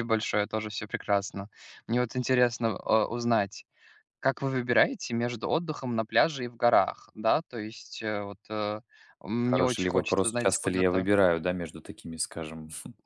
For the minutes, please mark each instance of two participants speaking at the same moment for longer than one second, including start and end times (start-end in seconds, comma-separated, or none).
9.4-11.1